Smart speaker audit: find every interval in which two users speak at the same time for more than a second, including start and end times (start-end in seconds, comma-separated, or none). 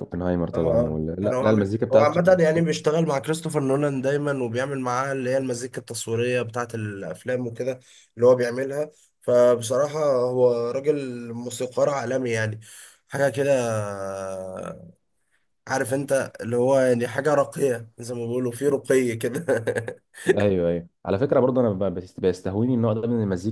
0.5-2.2